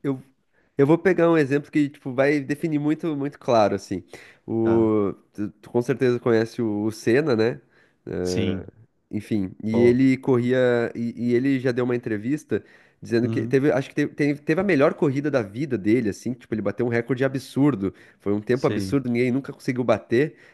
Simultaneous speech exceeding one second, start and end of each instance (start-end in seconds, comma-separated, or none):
none